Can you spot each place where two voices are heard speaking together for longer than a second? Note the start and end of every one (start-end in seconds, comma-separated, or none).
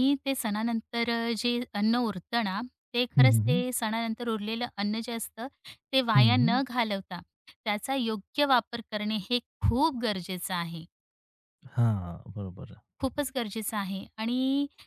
none